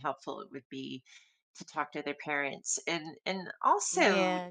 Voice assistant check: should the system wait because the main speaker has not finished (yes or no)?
no